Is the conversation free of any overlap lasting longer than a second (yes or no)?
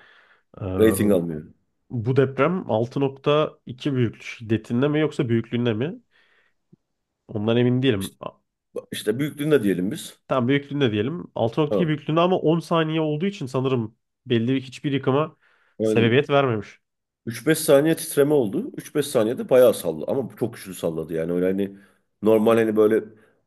yes